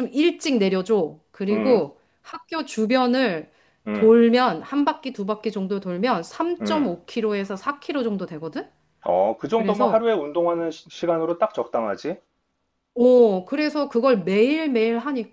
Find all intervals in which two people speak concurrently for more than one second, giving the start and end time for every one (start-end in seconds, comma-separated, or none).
none